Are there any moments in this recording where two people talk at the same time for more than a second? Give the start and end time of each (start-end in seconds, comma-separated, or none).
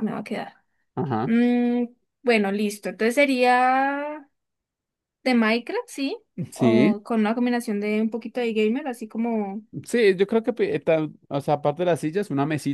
none